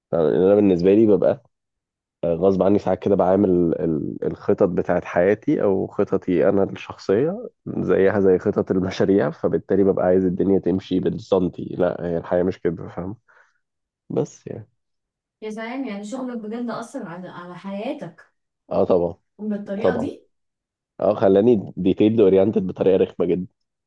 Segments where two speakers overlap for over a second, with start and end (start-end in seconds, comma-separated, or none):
none